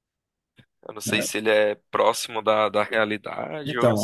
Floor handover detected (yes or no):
yes